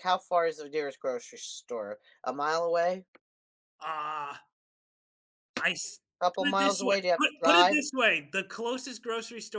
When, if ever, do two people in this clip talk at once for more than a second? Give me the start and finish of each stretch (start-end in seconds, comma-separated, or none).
6.4-7.9